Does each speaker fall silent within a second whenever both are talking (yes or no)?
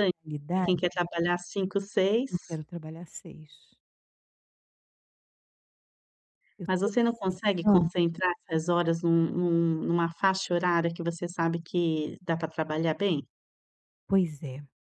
no